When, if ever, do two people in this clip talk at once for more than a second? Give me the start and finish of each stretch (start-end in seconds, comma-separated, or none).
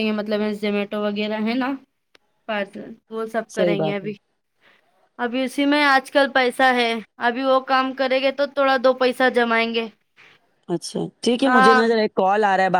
none